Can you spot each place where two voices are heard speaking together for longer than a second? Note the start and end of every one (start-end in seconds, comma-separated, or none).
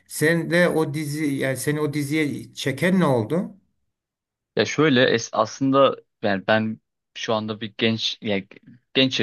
none